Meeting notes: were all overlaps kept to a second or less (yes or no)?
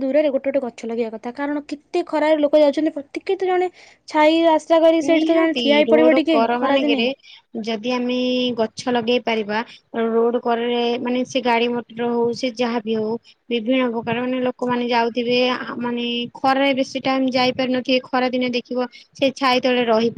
no